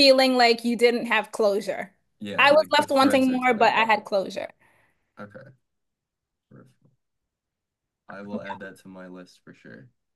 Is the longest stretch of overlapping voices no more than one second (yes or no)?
no